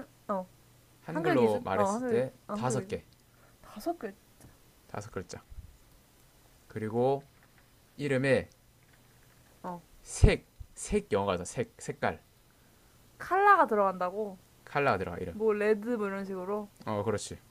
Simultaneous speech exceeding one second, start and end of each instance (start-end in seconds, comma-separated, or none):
1.1-3.0